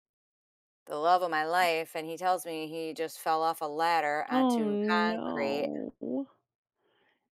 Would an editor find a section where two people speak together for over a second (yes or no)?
yes